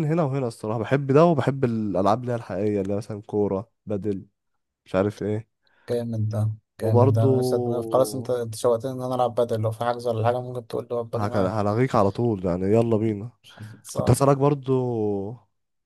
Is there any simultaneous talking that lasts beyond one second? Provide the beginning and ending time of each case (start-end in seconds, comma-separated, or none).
none